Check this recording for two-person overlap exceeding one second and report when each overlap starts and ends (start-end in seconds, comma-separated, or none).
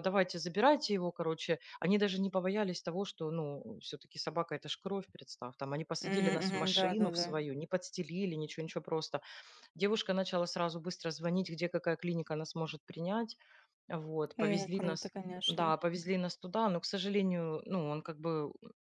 6.0-7.4, 14.4-15.7